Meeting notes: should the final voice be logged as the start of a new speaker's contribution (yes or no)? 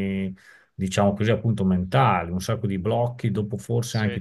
yes